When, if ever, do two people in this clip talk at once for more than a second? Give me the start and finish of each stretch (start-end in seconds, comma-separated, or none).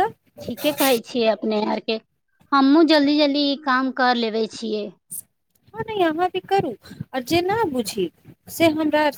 none